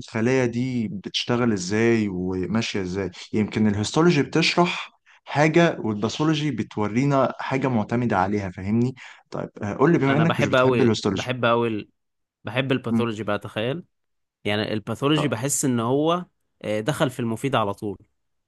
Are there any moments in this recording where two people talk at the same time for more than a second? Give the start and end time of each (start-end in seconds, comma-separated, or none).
10.1-11.4